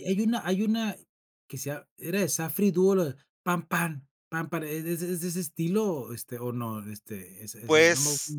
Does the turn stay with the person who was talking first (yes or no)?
no